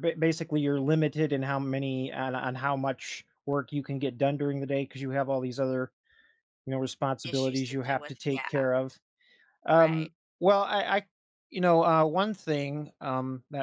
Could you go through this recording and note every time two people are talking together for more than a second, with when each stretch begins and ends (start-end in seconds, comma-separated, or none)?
7.2-8.7